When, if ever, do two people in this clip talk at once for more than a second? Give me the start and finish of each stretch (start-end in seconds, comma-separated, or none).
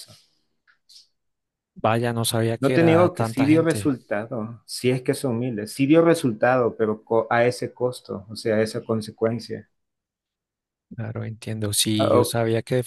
2.6-3.9